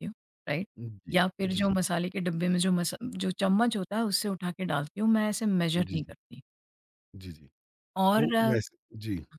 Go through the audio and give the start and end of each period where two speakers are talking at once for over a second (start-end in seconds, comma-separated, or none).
none